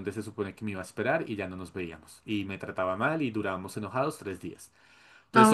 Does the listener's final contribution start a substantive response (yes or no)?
yes